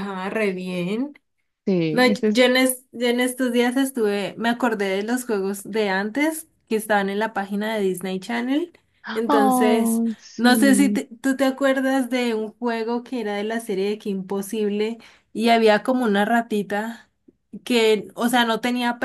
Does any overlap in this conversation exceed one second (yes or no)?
yes